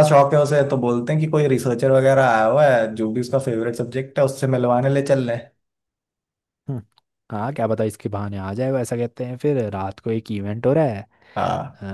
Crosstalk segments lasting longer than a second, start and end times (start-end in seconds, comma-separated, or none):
none